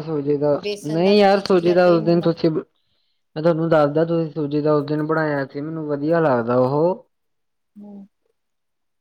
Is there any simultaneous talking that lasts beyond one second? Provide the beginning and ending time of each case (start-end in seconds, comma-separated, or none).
0.6-2.3